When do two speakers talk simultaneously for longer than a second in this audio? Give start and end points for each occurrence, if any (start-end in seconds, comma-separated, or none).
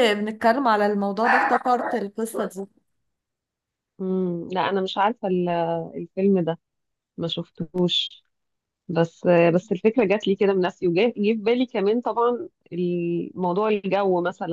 none